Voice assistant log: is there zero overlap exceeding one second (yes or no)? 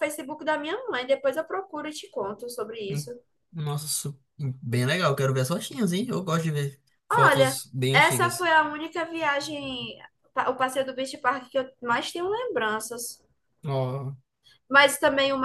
no